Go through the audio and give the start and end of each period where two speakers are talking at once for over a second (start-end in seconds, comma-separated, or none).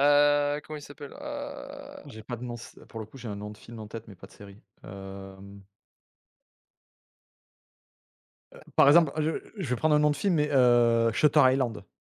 none